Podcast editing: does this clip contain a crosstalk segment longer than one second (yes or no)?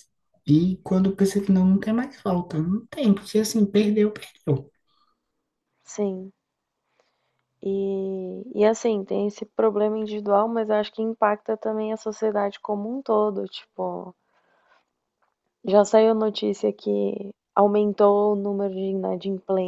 no